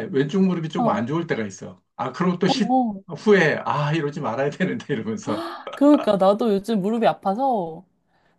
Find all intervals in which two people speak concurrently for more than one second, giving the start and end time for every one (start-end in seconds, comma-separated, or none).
none